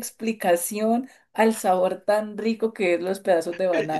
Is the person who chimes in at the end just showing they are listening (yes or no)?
no